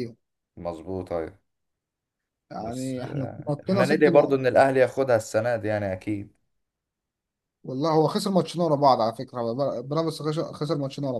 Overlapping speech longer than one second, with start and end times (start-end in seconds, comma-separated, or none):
2.6-4.4